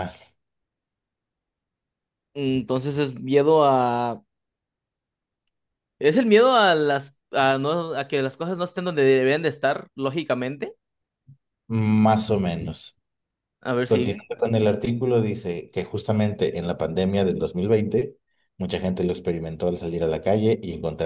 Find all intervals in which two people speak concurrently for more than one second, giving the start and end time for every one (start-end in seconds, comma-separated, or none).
none